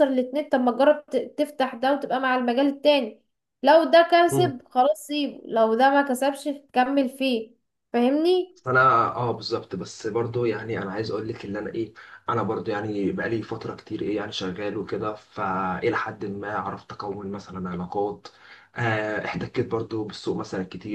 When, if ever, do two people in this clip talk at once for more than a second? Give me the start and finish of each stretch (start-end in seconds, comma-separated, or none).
none